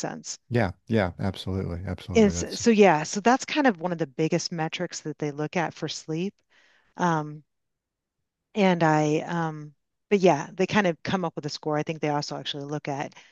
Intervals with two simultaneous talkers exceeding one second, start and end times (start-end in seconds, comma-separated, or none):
none